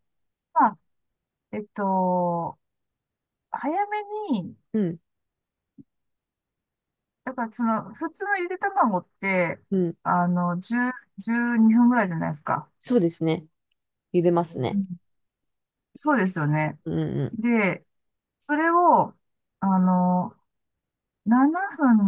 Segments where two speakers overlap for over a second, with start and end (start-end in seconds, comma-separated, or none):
none